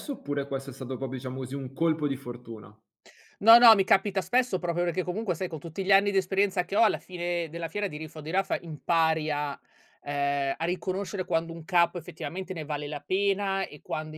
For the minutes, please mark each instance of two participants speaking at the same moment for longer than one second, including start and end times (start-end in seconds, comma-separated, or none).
none